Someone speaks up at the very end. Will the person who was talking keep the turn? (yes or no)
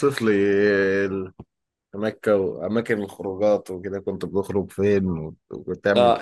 no